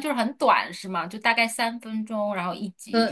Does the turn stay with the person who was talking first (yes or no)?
no